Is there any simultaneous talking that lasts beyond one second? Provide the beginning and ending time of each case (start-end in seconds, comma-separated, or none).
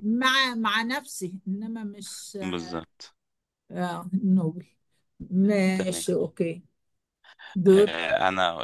none